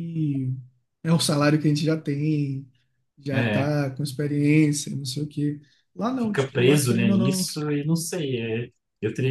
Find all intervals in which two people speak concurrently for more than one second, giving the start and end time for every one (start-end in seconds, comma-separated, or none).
6.2-7.5